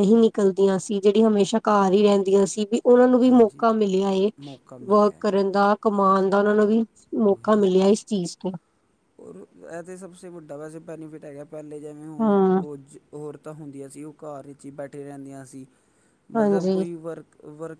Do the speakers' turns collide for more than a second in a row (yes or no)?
no